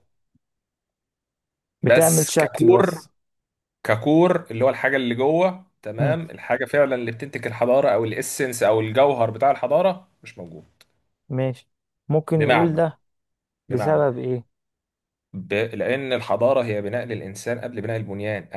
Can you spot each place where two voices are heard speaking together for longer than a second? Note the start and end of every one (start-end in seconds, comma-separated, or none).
1.8-3.0